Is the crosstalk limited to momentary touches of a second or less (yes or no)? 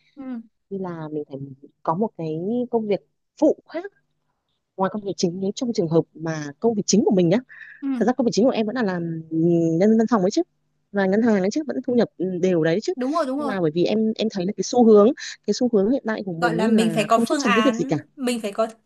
no